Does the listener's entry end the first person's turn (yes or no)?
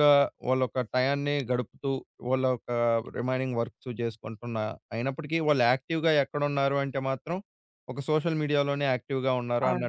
yes